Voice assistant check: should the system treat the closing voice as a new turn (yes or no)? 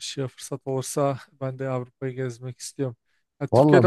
no